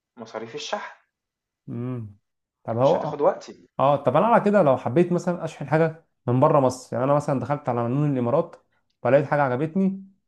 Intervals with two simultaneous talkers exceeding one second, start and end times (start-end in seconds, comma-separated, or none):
none